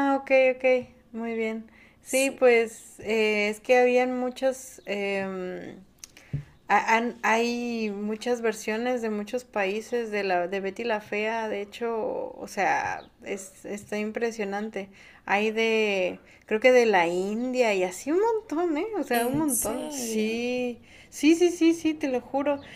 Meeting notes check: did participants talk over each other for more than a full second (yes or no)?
yes